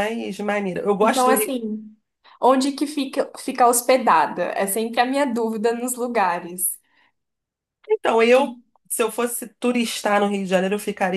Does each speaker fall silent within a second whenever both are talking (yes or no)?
yes